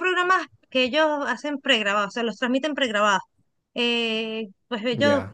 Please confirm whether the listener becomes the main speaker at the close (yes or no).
no